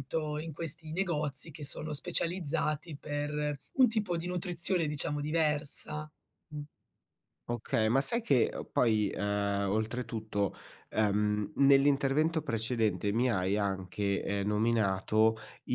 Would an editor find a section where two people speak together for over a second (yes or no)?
no